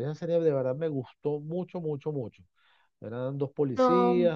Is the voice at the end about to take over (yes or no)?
no